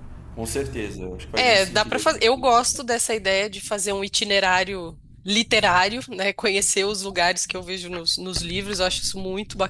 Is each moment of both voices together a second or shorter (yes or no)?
no